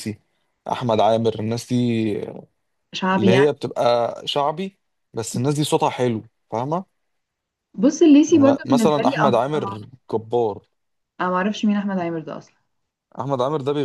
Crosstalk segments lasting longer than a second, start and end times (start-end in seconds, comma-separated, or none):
8.3-9.8